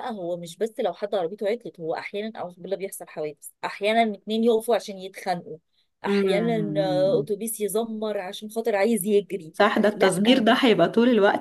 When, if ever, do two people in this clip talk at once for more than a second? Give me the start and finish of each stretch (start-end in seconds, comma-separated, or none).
6.0-7.3